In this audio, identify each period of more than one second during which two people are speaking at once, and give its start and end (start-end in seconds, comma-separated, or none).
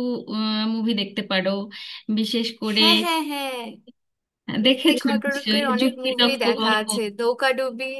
4.7-6.8